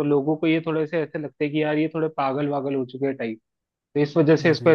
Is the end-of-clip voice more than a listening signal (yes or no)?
no